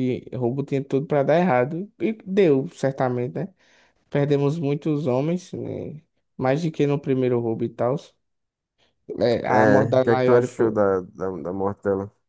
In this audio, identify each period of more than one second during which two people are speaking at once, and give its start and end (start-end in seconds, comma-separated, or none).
9.5-10.8